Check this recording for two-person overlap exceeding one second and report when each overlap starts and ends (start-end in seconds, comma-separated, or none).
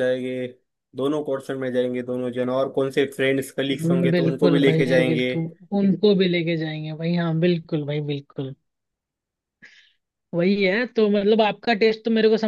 3.7-5.3